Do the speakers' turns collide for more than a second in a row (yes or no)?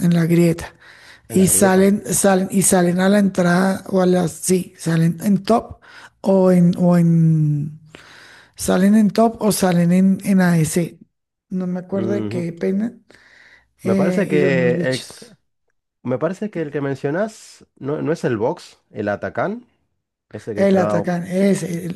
yes